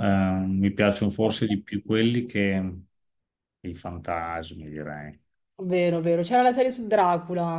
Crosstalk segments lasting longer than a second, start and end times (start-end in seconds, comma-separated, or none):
none